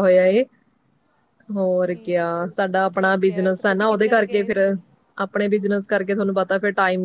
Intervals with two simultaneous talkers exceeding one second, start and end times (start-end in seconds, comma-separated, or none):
2.9-4.6